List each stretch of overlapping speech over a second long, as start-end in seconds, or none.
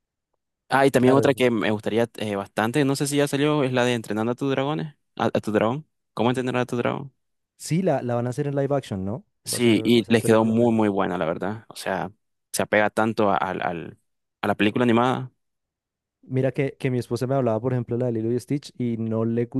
9.4-11.0